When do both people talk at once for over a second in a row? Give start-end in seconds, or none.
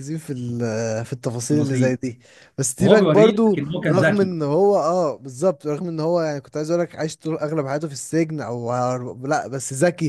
2.8-4.3